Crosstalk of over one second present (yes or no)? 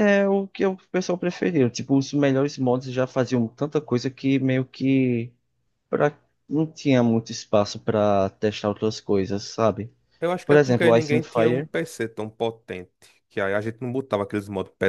yes